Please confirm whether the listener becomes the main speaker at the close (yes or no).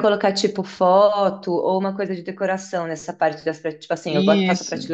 no